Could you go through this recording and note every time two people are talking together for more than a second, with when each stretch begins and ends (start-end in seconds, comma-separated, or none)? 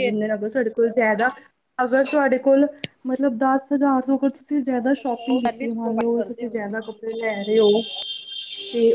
4.8-6.8